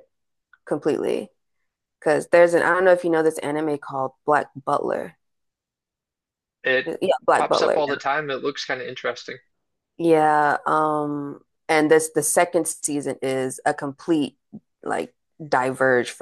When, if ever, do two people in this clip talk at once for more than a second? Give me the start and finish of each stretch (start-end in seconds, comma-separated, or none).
none